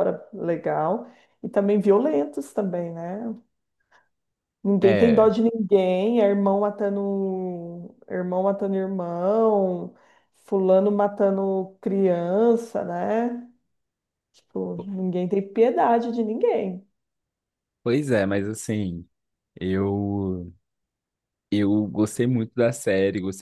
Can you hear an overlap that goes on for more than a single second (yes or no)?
no